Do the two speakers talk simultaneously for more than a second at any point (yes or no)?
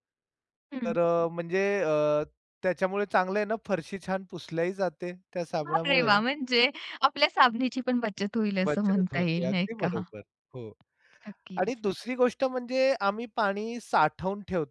yes